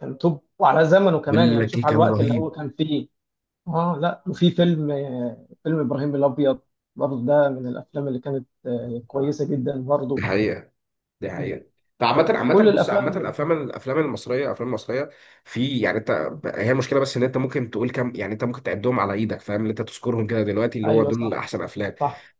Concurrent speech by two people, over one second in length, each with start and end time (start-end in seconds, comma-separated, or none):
1.3-2.5, 12.5-13.7